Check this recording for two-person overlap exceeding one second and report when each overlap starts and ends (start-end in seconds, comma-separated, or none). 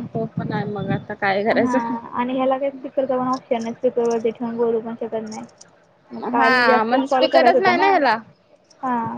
6.4-7.9